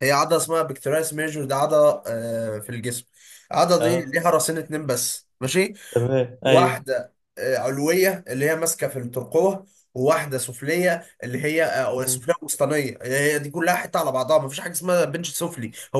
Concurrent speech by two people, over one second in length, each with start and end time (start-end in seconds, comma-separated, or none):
none